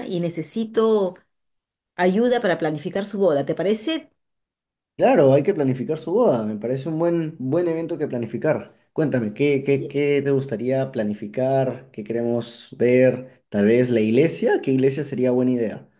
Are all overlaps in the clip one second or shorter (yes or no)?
yes